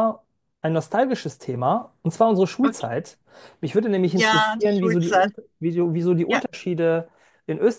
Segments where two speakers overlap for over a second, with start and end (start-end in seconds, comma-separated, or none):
4.0-5.3